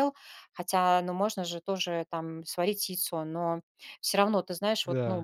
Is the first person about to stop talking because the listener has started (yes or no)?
no